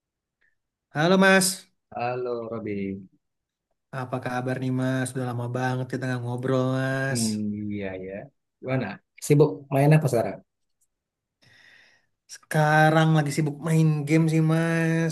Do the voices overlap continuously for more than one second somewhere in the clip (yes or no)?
no